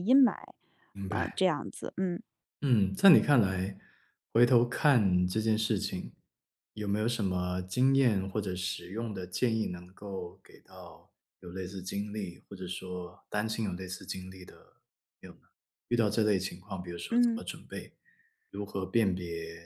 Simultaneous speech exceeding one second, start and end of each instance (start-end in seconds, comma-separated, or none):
none